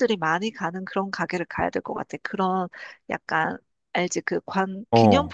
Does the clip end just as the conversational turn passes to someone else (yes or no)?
no